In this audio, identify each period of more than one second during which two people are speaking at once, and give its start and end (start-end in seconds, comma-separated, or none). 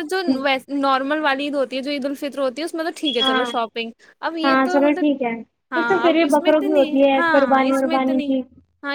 5.8-8.3